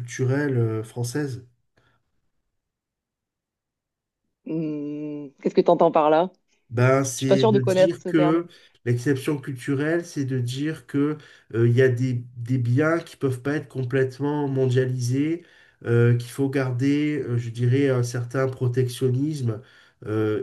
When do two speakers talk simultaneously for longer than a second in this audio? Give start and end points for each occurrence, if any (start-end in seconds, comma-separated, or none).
7.2-8.4